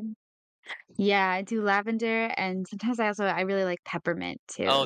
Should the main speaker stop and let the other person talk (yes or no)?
yes